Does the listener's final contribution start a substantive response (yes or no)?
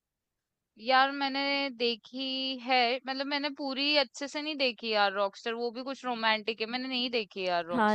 yes